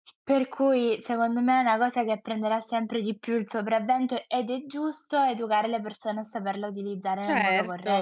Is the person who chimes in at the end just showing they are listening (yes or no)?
no